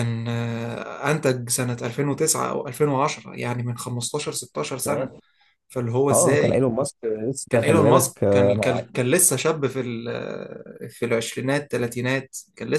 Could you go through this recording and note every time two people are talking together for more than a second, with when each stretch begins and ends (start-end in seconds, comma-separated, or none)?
7.5-8.8